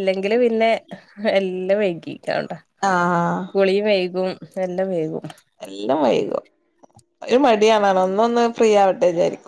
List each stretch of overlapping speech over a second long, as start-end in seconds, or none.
none